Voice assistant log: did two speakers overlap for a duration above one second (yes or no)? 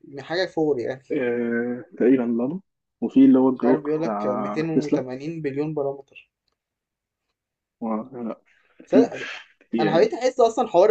yes